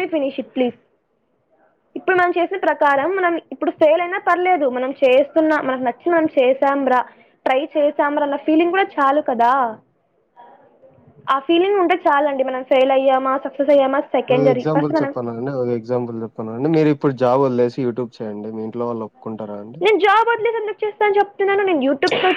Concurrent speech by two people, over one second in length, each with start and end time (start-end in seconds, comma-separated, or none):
none